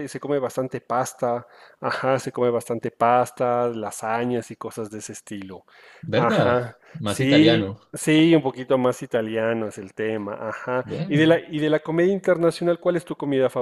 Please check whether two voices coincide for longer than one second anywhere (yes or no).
yes